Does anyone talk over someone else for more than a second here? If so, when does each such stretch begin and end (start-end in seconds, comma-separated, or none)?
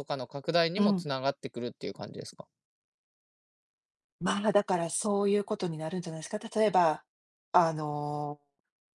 none